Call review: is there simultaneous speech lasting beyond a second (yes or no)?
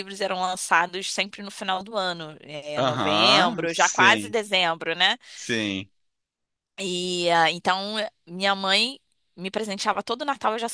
yes